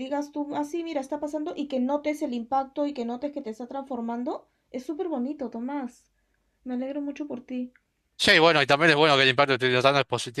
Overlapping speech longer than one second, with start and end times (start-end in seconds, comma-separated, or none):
none